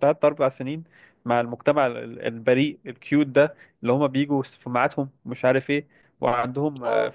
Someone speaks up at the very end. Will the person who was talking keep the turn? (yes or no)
yes